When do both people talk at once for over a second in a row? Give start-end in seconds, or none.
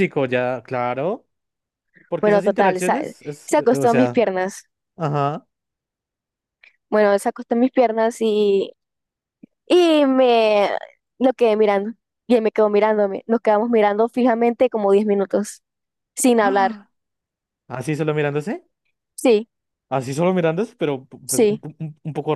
2.2-4.2